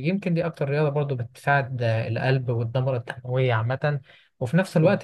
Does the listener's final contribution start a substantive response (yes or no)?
no